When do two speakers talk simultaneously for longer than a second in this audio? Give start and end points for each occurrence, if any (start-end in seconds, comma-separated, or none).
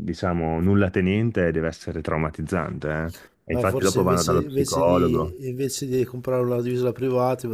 3.5-5.3